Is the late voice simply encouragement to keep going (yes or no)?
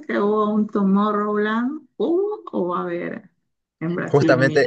no